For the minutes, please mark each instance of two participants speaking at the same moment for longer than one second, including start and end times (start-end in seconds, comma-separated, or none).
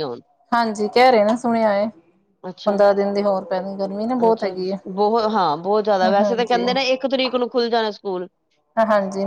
none